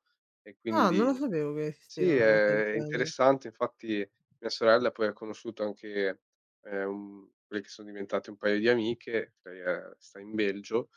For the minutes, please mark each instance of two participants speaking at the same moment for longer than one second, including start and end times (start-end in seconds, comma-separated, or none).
1.9-3.1